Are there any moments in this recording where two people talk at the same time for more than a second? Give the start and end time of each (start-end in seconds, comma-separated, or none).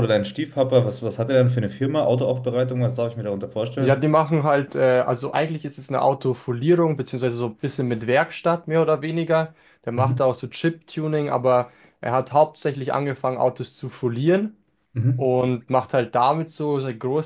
none